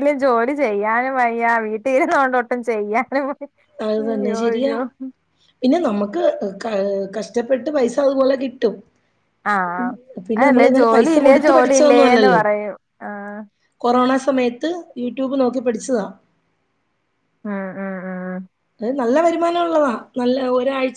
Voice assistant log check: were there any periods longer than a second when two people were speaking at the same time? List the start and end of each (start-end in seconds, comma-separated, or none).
10.4-12.4